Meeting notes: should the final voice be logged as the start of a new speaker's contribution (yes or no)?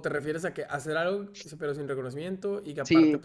yes